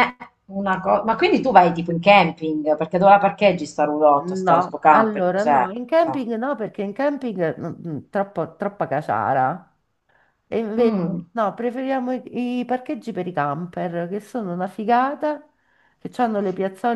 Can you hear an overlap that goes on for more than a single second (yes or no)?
yes